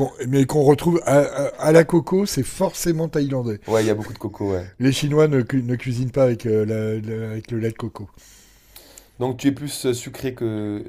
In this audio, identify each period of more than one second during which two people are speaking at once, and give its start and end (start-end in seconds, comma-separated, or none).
none